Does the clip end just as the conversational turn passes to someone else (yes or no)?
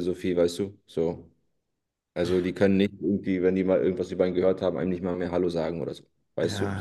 yes